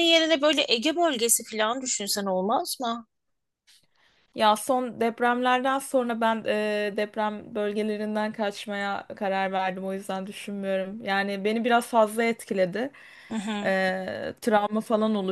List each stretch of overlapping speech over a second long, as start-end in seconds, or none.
none